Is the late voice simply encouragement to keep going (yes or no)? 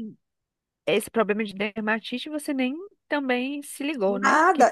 no